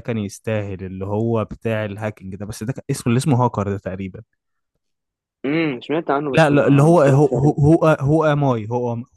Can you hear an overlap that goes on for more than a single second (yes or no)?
yes